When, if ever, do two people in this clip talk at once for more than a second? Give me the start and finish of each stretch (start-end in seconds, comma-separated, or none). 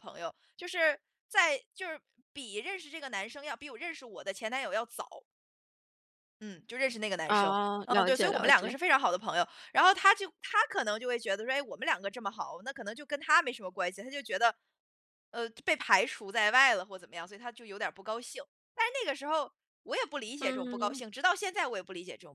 7.3-8.7